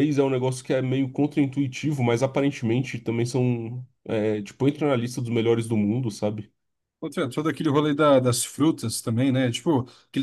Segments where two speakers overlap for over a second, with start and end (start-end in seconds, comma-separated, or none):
none